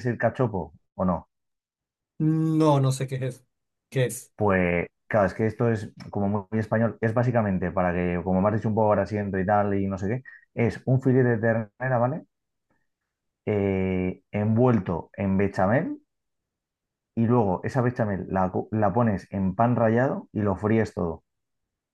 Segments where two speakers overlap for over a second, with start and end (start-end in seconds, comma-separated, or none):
none